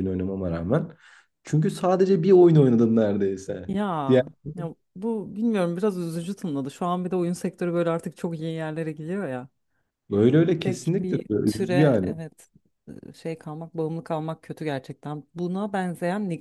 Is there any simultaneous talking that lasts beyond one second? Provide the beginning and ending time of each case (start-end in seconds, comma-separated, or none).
10.6-12.1